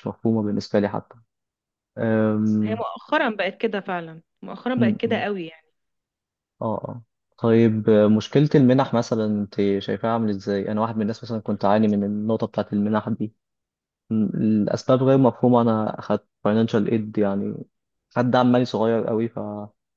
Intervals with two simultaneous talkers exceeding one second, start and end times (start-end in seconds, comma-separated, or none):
none